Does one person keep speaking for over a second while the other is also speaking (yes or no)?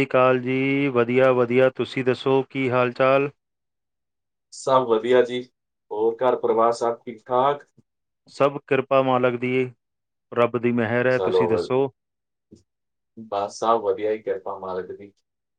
no